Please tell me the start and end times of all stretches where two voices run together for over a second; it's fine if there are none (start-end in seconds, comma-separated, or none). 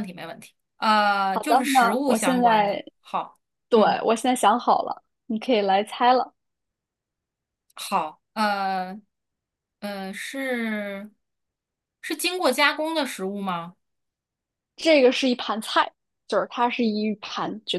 1.3-2.8